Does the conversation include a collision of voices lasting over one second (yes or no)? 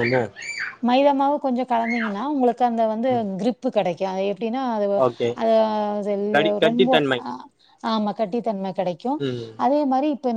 no